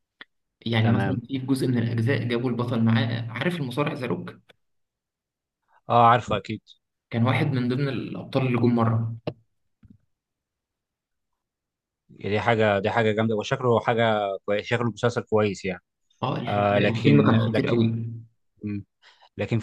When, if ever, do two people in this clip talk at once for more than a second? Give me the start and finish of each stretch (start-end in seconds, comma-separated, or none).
16.5-17.8